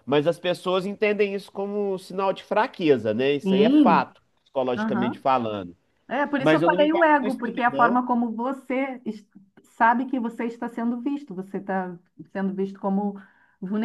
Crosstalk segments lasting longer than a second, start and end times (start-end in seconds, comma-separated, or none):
6.4-8.0